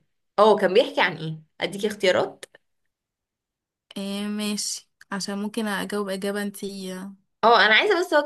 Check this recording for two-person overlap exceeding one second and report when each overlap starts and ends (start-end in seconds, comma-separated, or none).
none